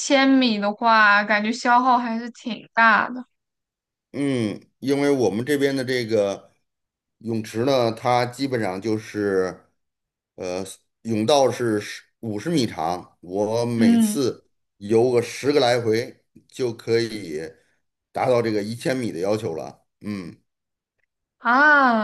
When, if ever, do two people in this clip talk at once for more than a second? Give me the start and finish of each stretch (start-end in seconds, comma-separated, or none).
none